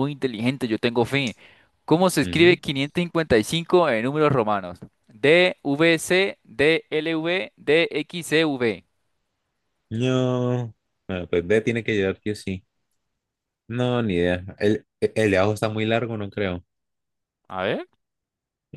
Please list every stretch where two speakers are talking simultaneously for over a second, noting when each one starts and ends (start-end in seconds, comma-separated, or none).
none